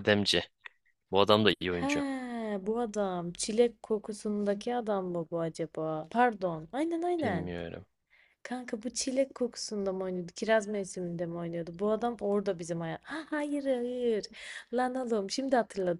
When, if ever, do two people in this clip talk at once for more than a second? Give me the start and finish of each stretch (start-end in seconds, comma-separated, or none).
none